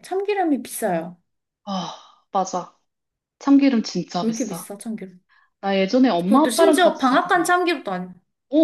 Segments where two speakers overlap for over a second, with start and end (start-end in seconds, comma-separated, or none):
6.3-7.5